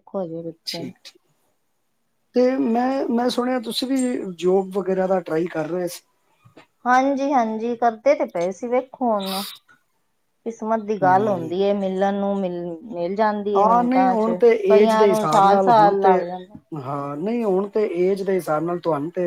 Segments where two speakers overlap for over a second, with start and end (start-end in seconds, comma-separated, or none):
13.6-16.2